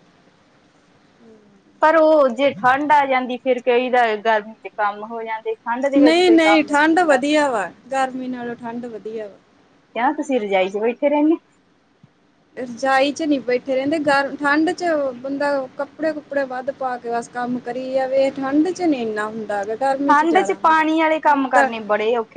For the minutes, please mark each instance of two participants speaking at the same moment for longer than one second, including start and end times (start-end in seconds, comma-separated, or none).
6.0-7.2